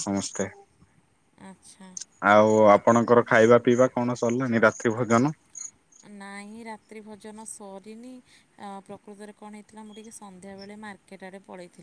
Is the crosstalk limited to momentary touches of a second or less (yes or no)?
yes